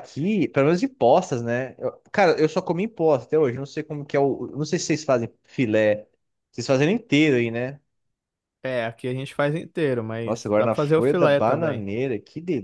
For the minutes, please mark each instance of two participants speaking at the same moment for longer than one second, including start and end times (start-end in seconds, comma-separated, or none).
10.2-11.8